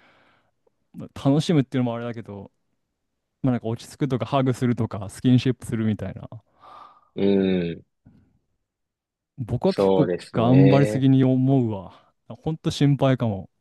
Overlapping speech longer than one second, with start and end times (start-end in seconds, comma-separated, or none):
9.7-11.1